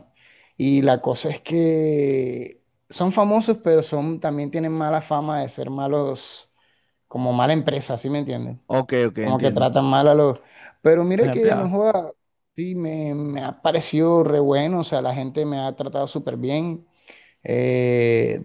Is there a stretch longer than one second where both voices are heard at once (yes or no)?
no